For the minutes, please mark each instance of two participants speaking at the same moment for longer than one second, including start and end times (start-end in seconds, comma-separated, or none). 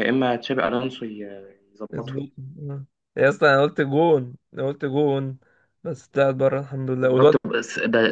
none